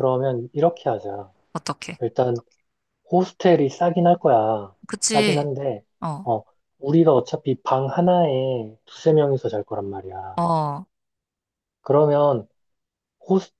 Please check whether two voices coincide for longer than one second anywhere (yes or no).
no